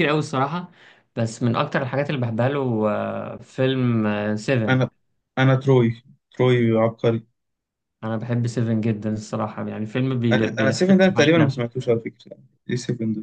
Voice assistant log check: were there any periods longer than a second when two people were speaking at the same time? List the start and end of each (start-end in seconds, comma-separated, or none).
10.3-11.6